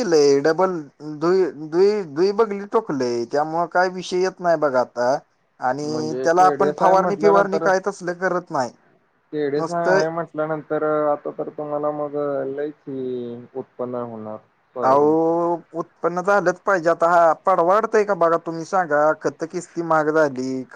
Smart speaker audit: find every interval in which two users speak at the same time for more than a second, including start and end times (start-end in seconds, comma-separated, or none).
5.9-7.7